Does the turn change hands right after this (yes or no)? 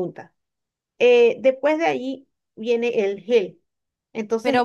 yes